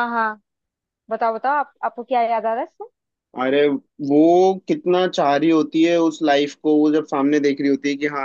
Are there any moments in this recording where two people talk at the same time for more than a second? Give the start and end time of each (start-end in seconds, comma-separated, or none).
none